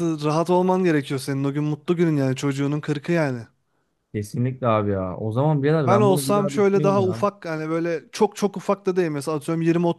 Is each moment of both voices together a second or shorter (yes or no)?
no